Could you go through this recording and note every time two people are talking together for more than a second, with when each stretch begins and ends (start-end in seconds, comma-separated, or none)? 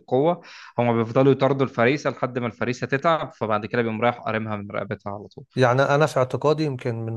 none